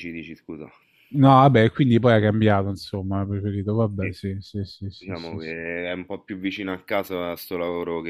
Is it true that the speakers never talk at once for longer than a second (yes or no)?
yes